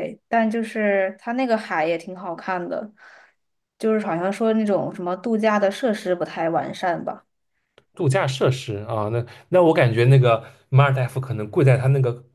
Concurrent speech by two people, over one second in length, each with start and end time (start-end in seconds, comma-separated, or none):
none